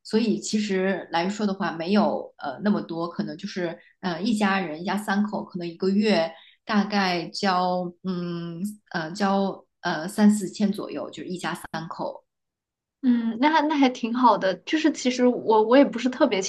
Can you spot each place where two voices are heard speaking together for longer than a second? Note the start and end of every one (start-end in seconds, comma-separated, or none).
none